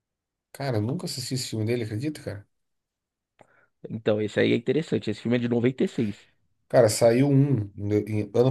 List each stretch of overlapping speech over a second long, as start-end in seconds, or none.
none